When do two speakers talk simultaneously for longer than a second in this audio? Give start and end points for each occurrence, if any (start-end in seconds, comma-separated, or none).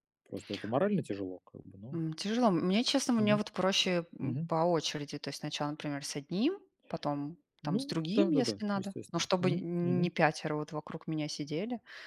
7.6-10.1